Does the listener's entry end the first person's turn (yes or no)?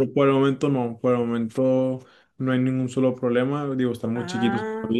no